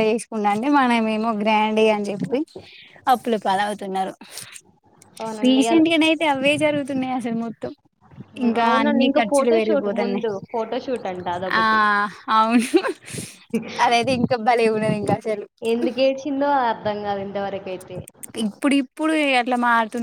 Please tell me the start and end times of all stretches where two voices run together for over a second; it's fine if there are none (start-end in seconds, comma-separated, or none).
8.4-10.3